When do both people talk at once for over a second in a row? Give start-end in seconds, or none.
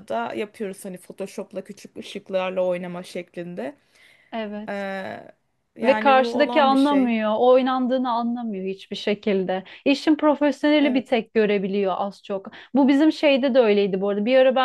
5.8-7.1